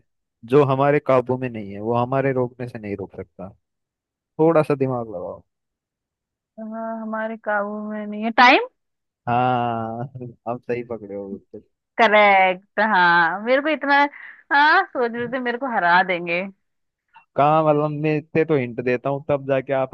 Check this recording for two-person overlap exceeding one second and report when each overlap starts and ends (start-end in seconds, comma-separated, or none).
none